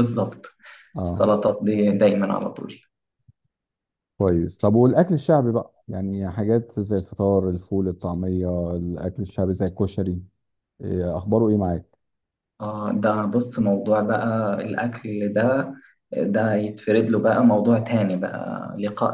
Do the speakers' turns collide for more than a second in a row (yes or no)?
no